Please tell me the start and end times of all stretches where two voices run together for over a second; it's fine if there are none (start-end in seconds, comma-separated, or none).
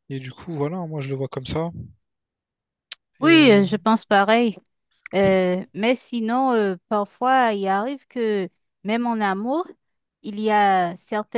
none